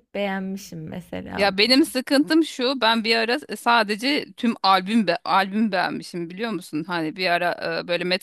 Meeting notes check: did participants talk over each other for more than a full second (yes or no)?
no